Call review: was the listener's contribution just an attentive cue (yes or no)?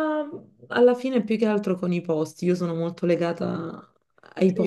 no